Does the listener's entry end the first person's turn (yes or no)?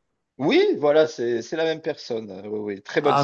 yes